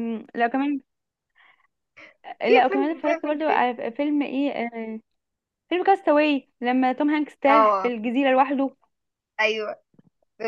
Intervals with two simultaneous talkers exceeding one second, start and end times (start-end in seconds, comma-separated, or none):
2.4-3.6